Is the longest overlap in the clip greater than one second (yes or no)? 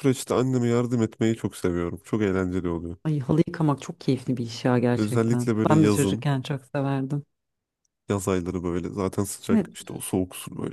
yes